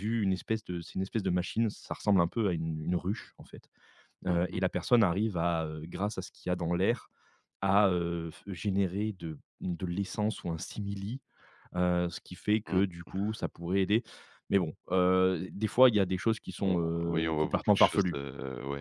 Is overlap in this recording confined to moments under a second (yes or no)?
no